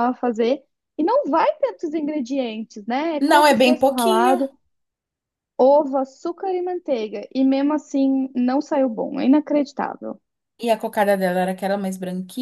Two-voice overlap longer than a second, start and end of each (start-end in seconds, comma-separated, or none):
3.2-4.4